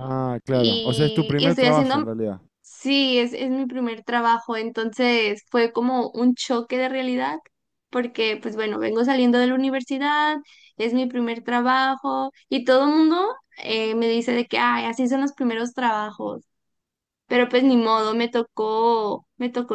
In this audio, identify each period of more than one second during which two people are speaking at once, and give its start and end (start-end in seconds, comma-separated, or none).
0.5-2.1